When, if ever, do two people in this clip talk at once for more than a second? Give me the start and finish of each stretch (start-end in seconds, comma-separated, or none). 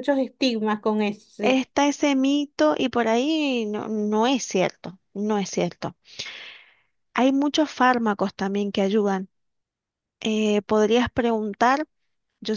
none